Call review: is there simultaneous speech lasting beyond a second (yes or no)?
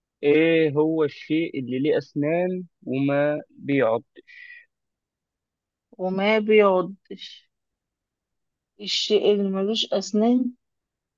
no